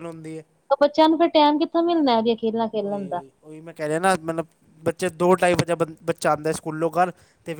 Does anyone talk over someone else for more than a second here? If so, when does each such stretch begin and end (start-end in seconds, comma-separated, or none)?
none